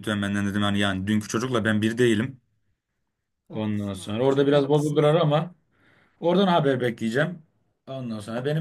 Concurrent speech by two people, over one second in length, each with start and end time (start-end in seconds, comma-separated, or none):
3.5-5.0